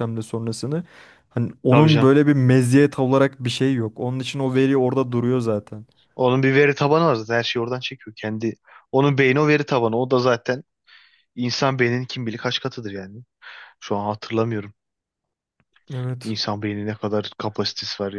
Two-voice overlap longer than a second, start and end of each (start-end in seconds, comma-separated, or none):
none